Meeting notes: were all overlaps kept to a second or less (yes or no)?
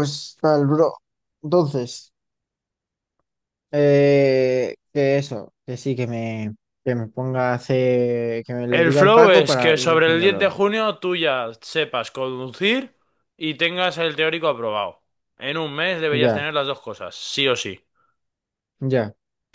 no